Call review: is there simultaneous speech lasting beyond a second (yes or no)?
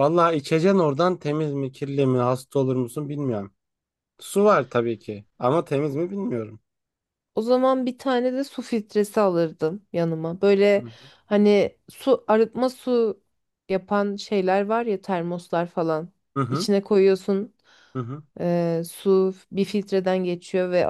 no